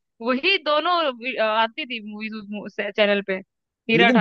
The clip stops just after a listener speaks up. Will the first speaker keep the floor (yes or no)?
no